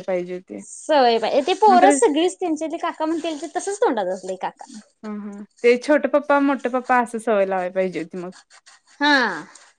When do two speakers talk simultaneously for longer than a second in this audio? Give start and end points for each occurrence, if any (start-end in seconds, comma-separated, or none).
none